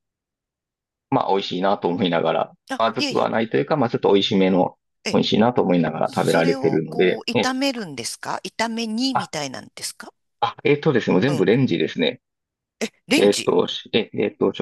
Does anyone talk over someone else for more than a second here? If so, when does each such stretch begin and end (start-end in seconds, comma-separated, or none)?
6.0-7.6